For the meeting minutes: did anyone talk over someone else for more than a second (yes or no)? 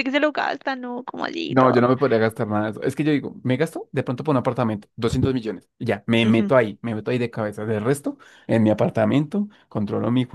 no